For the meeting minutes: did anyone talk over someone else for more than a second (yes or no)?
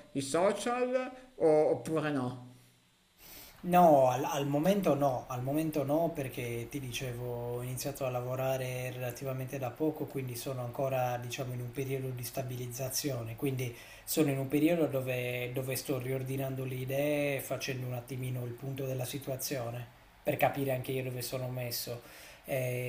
no